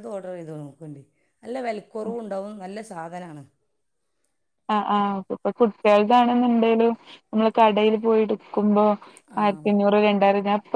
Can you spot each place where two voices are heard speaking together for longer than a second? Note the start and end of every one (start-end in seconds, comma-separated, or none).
none